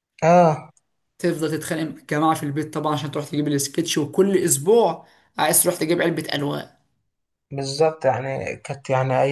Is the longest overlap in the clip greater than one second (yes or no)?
no